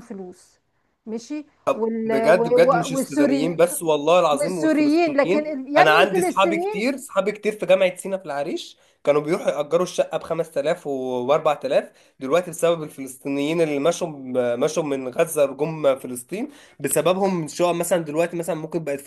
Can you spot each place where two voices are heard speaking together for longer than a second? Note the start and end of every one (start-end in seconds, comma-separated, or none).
2.0-3.7, 4.3-6.9